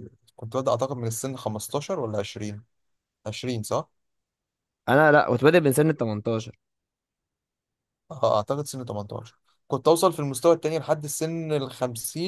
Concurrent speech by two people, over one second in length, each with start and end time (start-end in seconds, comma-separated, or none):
none